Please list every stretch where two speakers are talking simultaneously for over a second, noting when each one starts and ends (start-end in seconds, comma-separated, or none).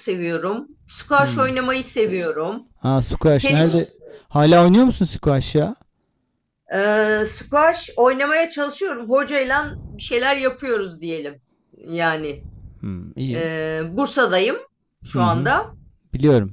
none